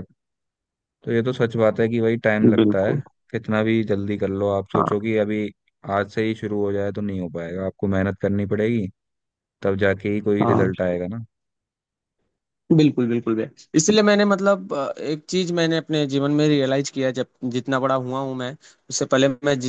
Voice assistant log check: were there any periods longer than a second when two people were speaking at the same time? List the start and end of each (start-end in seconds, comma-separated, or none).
none